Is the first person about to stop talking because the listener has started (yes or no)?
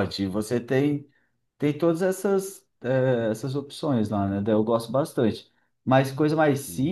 no